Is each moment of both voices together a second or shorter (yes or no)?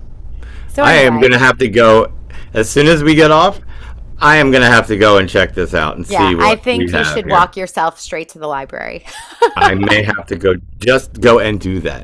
no